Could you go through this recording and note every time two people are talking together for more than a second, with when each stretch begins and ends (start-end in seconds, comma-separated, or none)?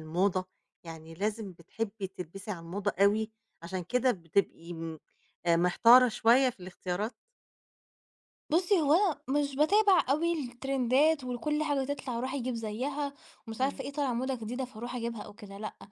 none